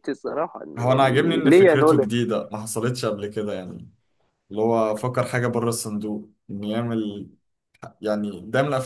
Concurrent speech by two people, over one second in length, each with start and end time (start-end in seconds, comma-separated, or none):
0.8-2.1